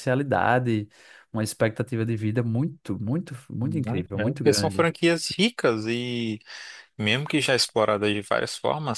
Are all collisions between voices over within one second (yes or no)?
no